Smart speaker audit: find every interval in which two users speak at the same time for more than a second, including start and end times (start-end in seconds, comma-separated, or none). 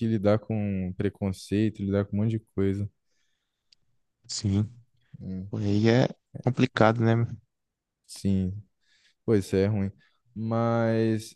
none